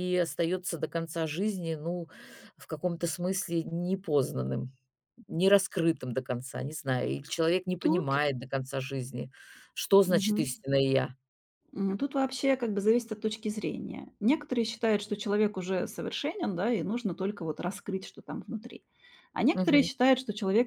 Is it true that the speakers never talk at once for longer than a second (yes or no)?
yes